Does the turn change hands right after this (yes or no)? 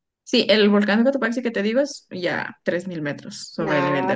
yes